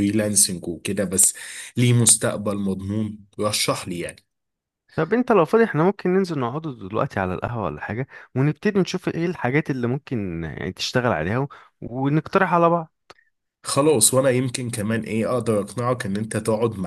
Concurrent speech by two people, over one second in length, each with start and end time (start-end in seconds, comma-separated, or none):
none